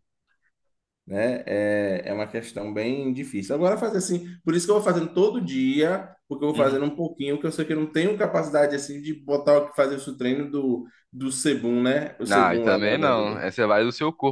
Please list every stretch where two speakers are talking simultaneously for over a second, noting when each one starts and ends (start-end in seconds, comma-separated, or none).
12.3-13.5